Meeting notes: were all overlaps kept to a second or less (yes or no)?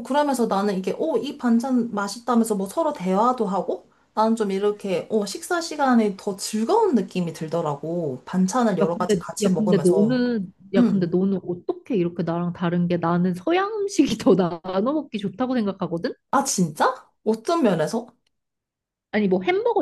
no